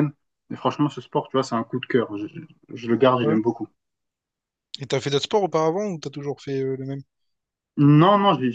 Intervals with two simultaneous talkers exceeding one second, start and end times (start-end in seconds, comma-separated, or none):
none